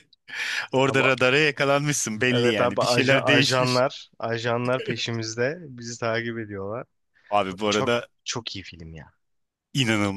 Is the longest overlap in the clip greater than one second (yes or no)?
yes